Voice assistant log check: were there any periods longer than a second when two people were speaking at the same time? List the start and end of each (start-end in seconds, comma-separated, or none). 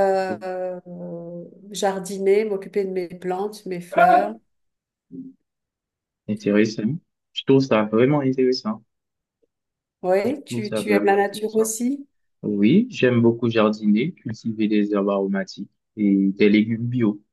10.3-11.7